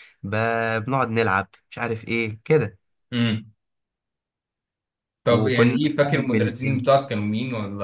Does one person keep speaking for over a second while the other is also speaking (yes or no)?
yes